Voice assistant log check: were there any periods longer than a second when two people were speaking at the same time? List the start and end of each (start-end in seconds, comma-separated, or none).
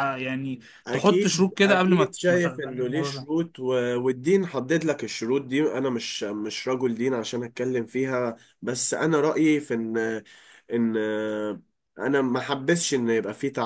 0.9-3.3